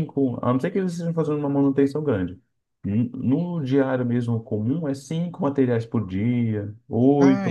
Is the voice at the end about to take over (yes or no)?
no